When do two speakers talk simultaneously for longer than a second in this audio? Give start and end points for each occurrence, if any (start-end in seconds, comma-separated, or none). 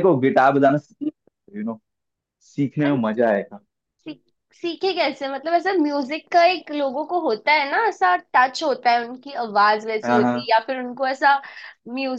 none